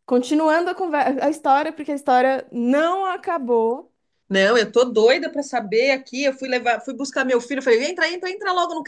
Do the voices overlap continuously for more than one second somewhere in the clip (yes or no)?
no